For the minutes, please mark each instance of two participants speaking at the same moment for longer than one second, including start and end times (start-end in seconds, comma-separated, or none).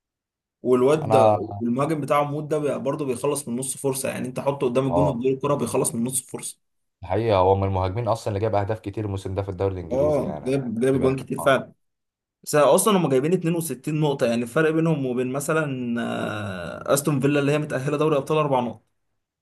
9.9-11.6